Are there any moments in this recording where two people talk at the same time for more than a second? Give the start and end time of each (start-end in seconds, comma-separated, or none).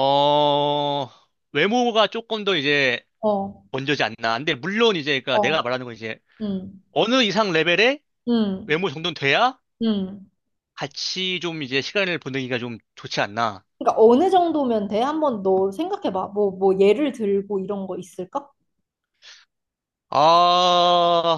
none